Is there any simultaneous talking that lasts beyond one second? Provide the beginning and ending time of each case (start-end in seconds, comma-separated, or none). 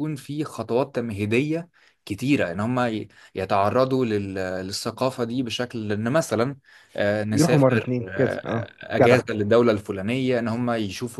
7.3-9.2